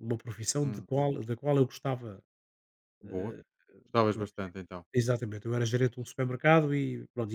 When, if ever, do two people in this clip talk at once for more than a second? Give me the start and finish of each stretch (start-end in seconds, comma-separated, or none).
none